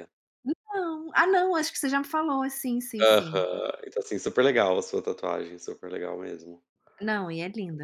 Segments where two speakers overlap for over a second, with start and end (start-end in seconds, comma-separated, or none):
none